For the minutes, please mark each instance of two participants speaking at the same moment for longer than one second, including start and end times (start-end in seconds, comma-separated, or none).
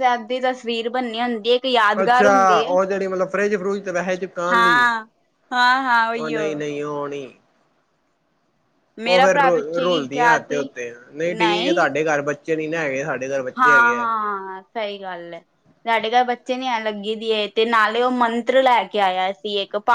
9.1-10.6